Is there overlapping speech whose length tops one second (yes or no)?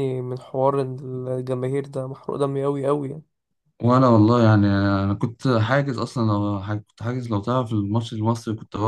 no